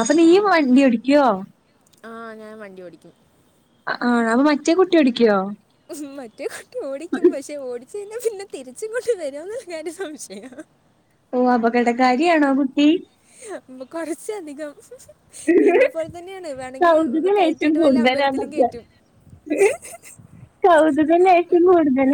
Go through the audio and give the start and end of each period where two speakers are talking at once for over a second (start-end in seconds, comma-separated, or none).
16.8-18.7